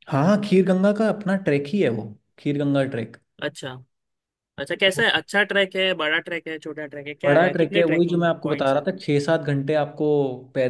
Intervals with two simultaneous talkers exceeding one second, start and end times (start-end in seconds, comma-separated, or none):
7.2-8.8